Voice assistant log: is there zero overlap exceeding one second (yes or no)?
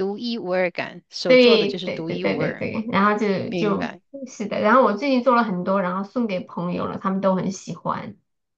no